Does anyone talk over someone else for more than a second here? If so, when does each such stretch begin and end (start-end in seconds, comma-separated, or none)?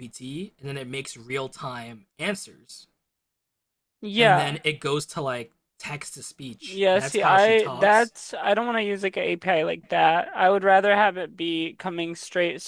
6.7-8.1